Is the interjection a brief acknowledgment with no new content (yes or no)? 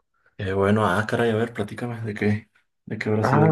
no